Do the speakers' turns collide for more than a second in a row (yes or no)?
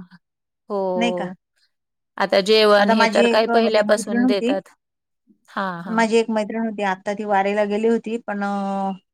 yes